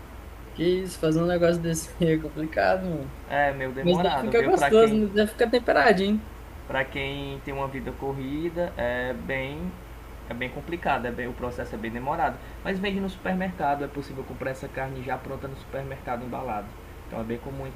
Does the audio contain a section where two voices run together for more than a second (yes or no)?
yes